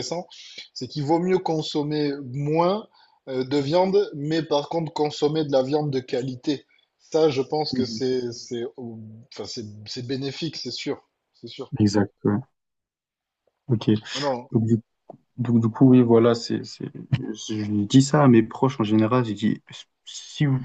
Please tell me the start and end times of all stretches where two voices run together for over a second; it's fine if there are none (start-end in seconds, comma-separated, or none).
none